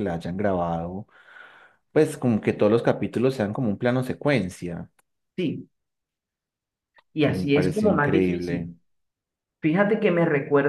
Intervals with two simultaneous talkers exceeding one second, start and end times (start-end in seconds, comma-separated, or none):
7.2-8.7